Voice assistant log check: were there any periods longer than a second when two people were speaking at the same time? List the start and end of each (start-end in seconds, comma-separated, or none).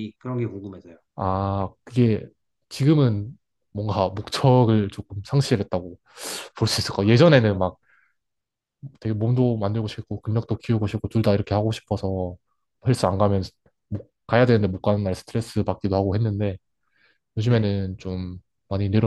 none